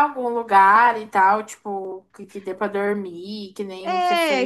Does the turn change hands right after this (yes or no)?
yes